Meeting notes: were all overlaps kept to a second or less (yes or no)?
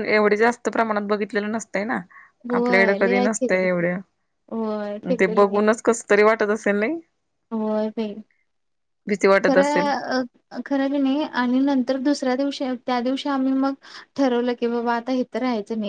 no